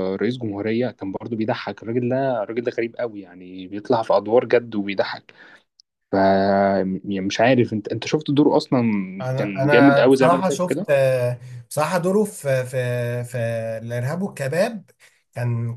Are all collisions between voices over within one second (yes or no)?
no